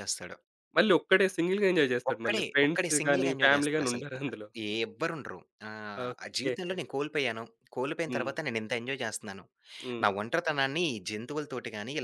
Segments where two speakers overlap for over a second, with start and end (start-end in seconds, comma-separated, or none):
2.1-4.2